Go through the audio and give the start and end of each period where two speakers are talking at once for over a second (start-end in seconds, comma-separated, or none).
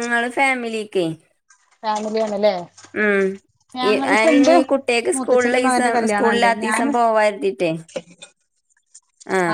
5.1-6.9